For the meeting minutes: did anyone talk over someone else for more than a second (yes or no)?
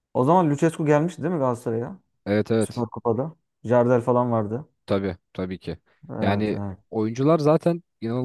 no